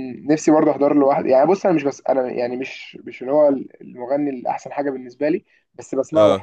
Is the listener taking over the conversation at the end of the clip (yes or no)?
no